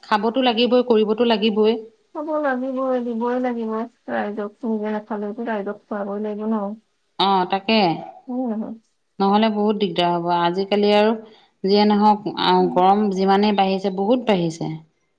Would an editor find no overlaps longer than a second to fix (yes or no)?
yes